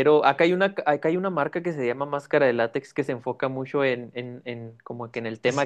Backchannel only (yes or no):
yes